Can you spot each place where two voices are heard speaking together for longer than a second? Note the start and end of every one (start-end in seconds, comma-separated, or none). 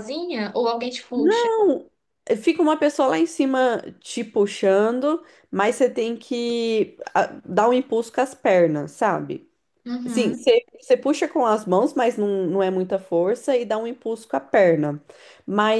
none